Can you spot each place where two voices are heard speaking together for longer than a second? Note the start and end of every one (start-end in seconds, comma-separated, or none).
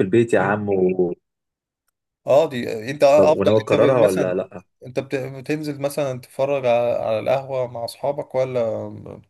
3.1-4.4